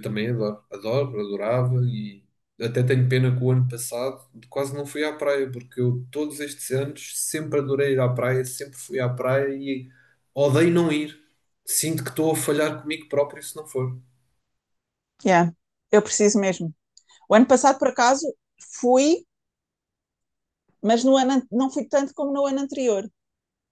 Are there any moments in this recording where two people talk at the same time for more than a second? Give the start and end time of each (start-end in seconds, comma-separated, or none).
none